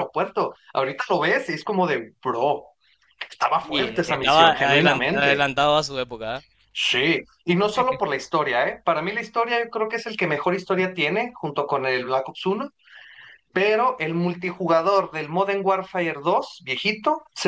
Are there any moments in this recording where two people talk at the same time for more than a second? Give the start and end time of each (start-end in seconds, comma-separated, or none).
3.6-5.4